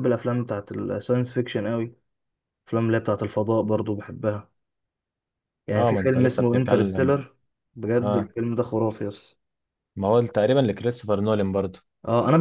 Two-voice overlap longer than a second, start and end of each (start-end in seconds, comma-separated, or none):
5.7-7.2